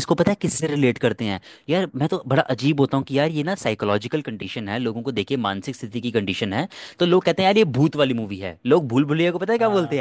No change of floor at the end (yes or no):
yes